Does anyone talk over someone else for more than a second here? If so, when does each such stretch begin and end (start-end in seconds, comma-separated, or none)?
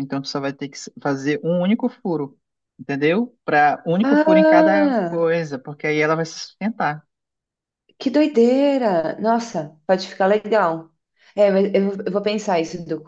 4.0-5.3